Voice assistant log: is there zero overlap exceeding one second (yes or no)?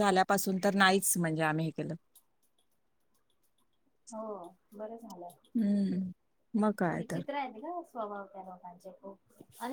yes